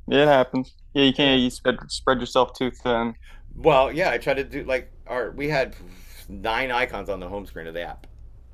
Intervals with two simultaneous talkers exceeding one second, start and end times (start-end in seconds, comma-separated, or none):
none